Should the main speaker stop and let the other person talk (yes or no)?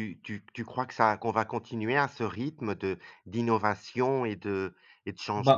yes